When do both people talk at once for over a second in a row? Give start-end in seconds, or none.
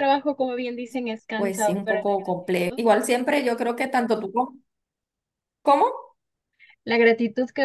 1.4-2.8